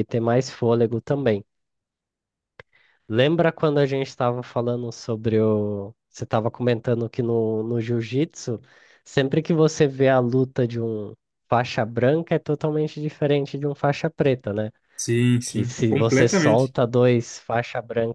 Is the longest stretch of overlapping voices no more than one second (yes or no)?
no